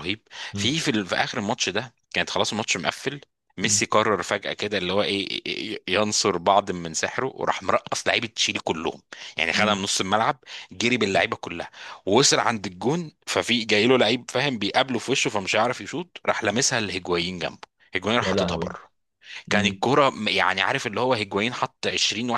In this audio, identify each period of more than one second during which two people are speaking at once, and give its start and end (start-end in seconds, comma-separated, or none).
none